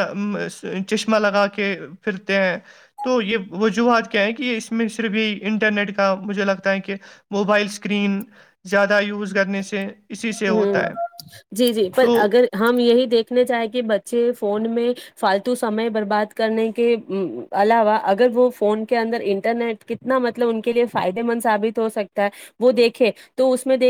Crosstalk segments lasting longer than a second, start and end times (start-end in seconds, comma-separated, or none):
none